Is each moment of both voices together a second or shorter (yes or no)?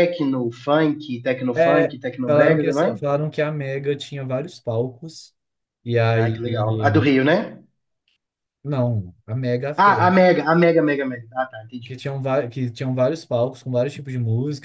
no